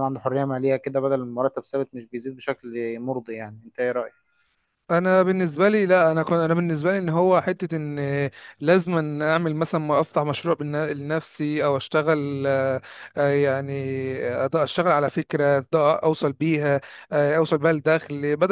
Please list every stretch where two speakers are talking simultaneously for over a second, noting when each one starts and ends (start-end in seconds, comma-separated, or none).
none